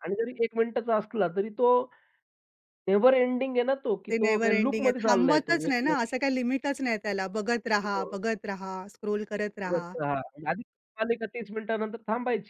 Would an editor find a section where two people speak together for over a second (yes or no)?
yes